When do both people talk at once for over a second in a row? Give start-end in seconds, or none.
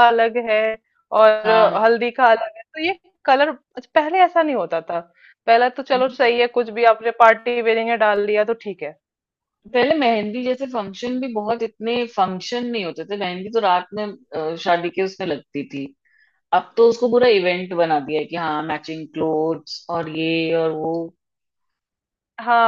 none